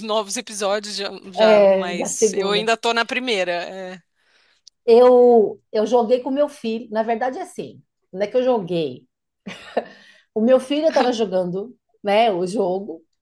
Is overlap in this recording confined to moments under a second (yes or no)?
no